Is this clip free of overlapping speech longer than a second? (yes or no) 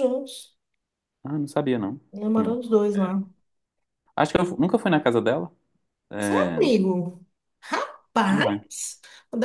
yes